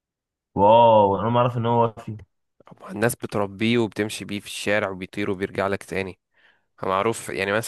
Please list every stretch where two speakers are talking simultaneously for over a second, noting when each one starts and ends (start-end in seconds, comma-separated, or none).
none